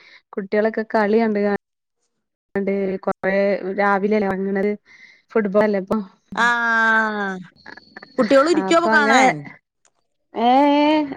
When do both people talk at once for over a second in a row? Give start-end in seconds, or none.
none